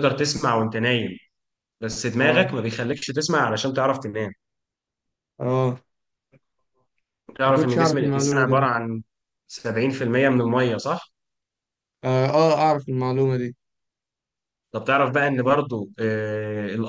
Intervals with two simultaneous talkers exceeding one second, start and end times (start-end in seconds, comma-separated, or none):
7.5-8.7